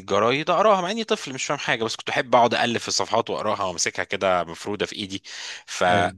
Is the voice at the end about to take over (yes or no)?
no